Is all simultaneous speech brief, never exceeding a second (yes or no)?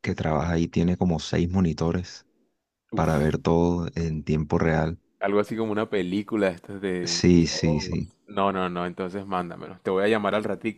yes